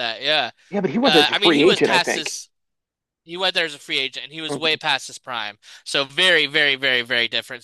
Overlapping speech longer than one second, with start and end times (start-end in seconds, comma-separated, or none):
1.1-2.3